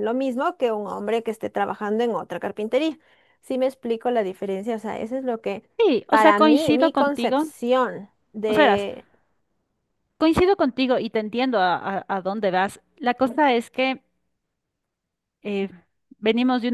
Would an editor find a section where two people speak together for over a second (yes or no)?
yes